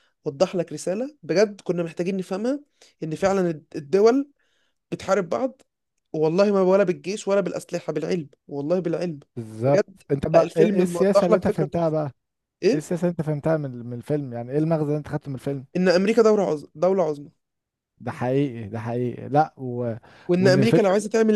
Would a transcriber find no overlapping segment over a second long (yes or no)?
no